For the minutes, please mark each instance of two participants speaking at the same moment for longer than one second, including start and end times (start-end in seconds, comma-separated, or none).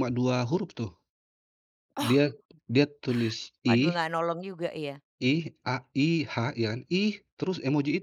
none